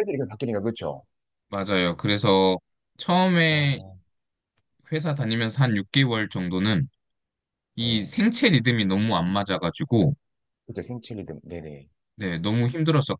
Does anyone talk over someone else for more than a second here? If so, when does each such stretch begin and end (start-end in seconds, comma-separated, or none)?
none